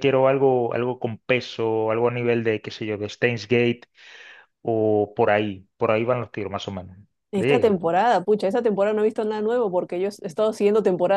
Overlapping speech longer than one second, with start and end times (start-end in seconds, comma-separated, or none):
none